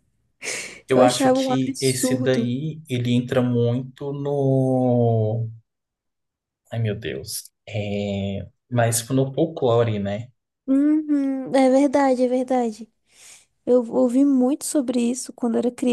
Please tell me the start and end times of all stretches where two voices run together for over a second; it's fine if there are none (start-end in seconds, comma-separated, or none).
0.9-2.5